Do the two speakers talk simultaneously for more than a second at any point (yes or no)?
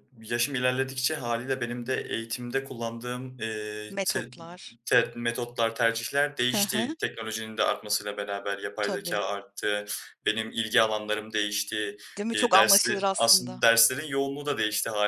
yes